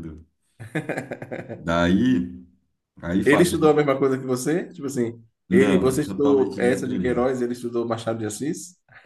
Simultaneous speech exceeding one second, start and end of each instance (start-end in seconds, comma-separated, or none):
5.5-7.3